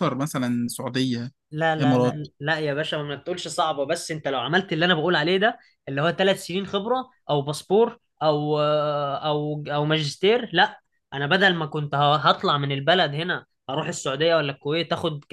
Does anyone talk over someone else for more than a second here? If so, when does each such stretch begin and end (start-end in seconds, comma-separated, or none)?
none